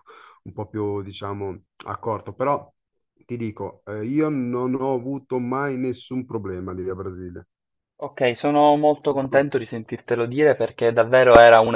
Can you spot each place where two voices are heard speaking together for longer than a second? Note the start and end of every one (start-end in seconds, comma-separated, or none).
none